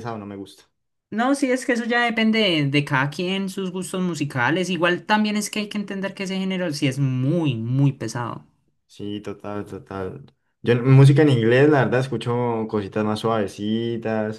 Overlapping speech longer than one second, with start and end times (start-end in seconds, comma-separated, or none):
none